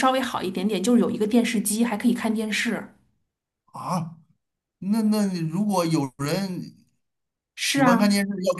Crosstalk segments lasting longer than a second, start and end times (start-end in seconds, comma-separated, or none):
none